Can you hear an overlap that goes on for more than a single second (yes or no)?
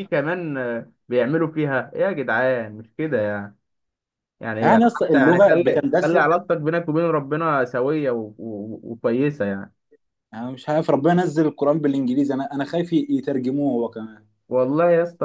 yes